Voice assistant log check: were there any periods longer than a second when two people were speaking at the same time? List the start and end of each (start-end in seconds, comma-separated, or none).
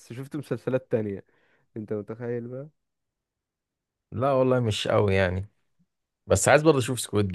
none